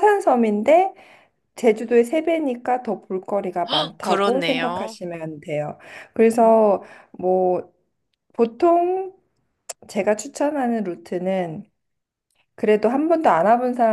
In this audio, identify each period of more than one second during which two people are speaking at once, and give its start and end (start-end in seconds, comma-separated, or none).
3.7-5.0